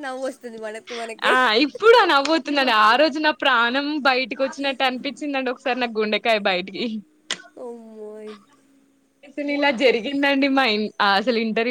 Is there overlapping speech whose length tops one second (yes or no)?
no